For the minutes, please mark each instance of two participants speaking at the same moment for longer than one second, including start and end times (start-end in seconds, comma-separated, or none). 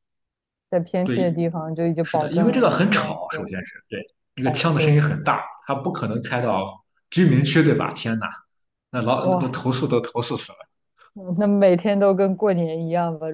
2.0-3.5